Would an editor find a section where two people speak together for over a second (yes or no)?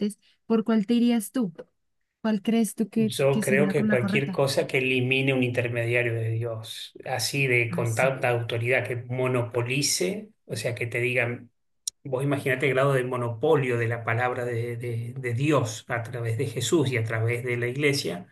yes